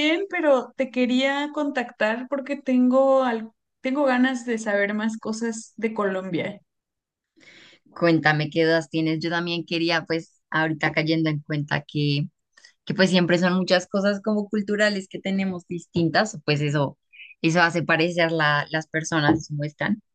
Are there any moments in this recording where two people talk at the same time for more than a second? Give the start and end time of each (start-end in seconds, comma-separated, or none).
none